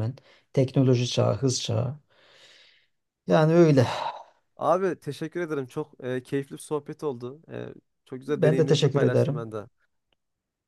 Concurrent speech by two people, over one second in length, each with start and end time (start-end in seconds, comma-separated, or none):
8.3-9.5